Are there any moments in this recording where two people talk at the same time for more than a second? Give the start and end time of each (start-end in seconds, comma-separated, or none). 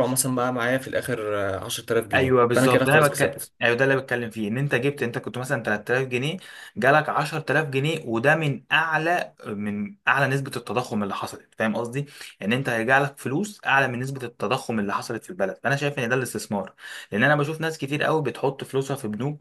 2.1-3.5